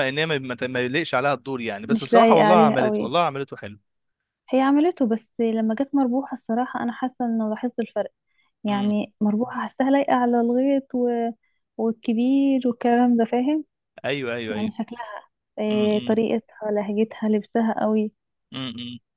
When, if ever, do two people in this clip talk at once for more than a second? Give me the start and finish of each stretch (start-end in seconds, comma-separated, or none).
1.9-3.1